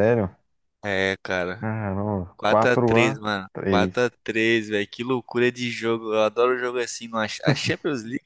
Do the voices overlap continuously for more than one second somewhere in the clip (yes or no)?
yes